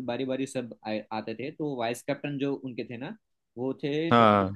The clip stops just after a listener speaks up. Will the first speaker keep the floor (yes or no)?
yes